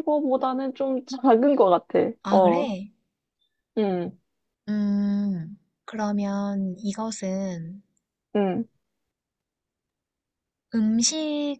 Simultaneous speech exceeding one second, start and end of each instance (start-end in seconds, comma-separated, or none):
none